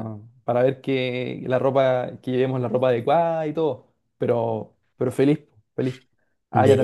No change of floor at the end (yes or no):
yes